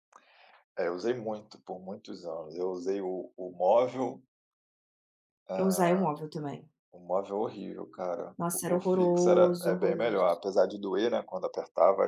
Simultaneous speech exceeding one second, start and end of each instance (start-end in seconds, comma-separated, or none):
8.4-10.2